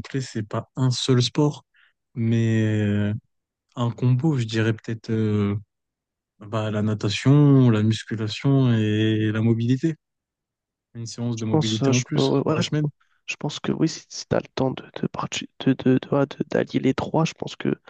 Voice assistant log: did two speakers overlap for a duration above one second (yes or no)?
yes